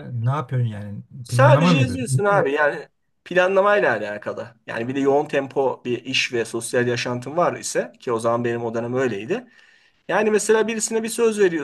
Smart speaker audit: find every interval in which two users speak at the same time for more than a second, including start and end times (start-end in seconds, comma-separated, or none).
1.2-2.5